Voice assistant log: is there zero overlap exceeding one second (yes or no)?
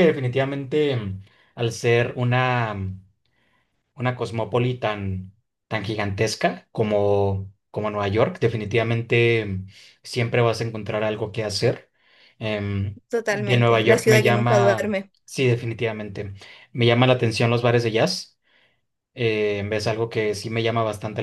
no